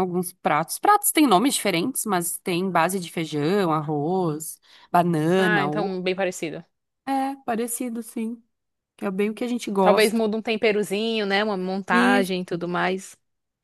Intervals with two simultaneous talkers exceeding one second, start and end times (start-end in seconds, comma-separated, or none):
none